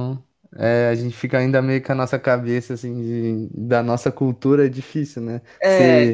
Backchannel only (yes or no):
yes